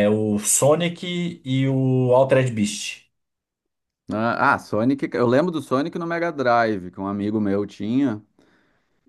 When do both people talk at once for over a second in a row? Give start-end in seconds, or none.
none